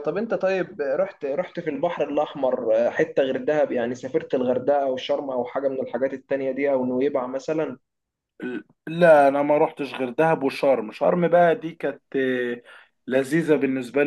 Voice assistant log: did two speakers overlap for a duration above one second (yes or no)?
no